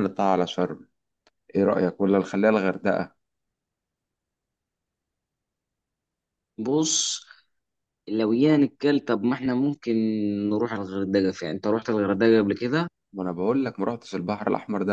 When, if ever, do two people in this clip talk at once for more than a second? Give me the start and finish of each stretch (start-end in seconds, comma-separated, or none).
none